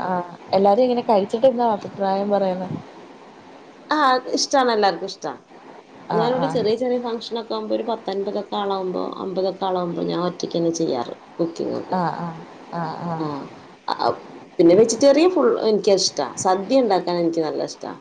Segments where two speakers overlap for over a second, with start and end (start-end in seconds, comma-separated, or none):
none